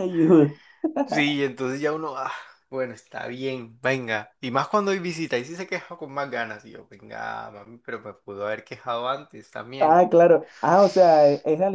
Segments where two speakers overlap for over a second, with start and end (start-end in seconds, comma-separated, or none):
none